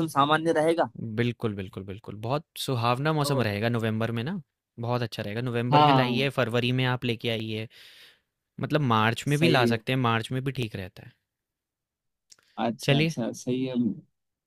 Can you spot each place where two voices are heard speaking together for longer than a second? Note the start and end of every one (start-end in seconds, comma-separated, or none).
none